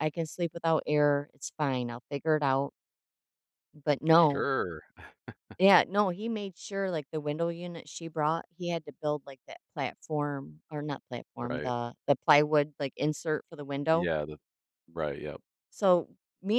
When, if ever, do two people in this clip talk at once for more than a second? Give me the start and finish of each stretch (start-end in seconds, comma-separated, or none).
none